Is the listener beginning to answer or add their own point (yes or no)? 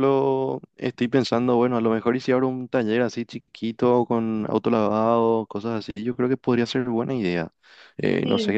no